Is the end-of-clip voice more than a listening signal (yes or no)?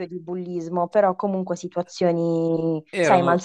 yes